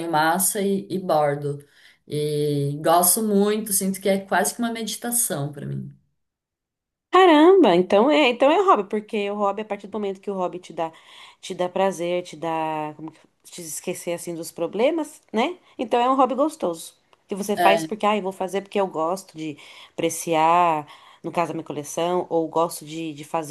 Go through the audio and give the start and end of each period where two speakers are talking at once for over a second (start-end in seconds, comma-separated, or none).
none